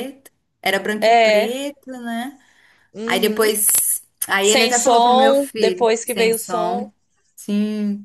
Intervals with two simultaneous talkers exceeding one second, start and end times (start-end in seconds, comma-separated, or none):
4.4-6.9